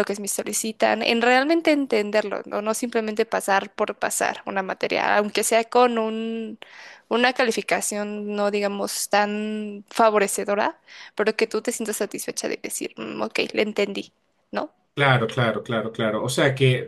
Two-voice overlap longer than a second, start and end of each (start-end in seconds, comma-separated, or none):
none